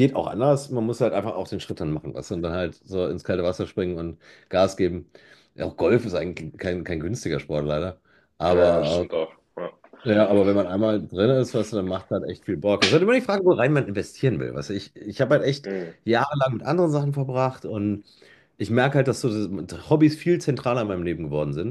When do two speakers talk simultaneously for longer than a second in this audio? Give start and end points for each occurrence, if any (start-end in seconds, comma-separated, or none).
none